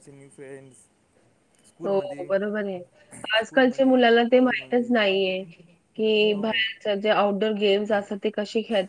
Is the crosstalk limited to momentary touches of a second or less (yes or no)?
no